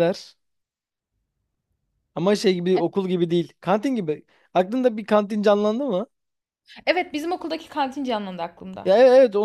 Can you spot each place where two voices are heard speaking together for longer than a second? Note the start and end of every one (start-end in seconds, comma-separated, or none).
none